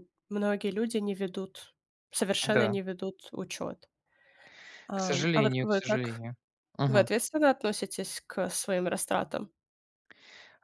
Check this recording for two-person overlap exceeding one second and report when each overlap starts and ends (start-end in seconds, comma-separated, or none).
4.9-6.2